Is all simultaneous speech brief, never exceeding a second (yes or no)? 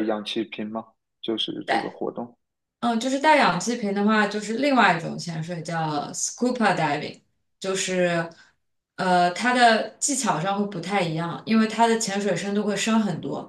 yes